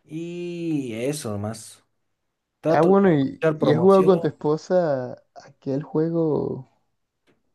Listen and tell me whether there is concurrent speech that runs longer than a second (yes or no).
yes